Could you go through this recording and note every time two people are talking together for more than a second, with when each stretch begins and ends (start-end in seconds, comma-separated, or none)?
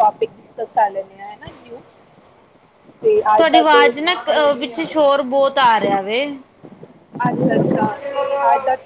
none